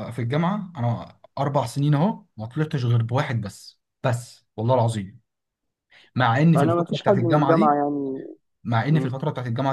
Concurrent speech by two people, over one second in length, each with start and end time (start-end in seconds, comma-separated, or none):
6.5-7.8